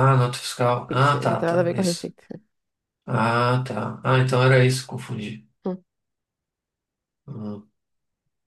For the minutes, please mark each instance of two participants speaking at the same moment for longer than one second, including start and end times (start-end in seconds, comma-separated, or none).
0.9-2.1